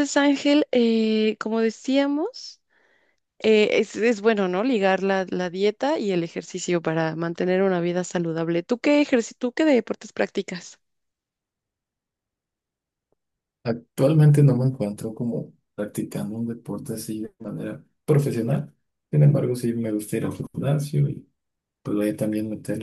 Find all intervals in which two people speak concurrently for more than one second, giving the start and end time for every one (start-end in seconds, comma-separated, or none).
none